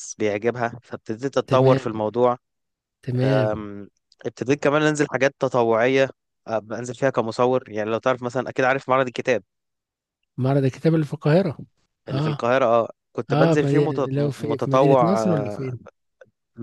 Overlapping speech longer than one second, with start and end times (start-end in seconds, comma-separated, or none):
13.3-15.7